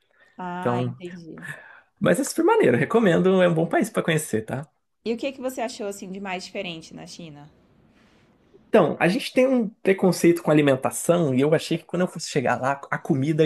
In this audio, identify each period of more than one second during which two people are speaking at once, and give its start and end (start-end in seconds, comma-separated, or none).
none